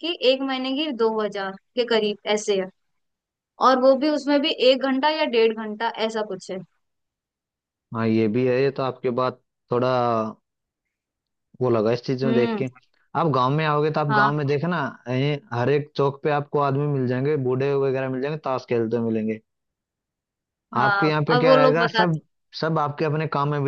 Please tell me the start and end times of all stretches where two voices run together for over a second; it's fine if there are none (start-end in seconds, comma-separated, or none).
20.8-22.2